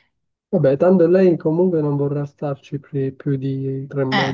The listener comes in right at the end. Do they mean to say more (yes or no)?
yes